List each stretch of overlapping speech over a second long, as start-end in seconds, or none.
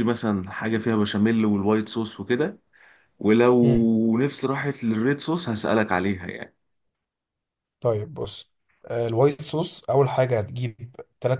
none